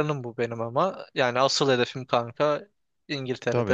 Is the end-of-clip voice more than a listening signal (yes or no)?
yes